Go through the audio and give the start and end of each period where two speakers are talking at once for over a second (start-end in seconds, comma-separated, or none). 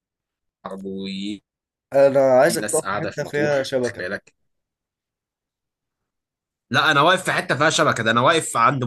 2.6-4.1